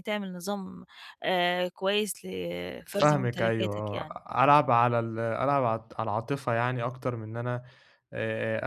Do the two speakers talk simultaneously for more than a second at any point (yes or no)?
yes